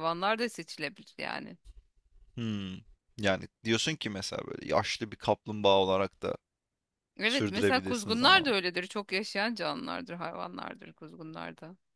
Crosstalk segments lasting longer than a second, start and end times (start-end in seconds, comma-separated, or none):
7.2-8.6